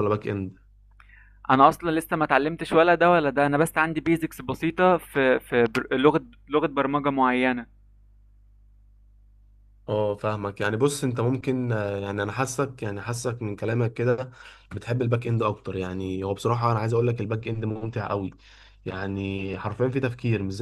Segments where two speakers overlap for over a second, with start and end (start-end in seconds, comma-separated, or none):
none